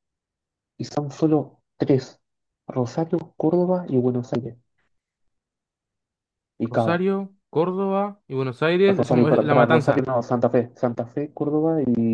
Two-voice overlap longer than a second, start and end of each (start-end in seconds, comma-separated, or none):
8.9-10.1